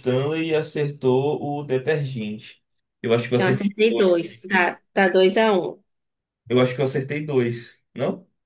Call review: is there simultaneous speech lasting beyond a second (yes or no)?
yes